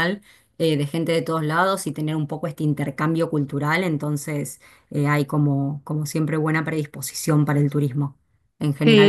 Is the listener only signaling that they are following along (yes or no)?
no